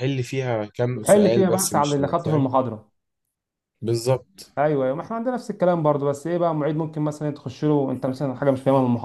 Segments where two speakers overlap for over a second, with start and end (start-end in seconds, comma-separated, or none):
0.9-2.5